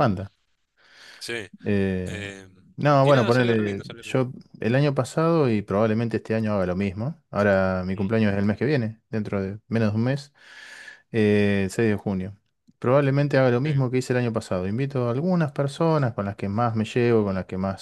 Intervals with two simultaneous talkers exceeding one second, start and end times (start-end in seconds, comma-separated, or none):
3.0-4.2